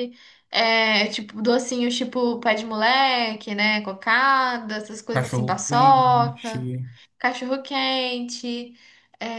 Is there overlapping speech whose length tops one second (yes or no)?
yes